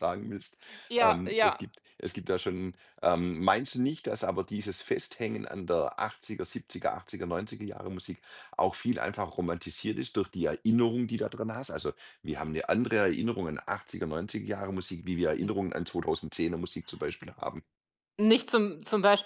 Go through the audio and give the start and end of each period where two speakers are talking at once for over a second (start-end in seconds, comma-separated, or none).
none